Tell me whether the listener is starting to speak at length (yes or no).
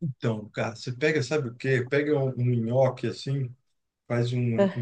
no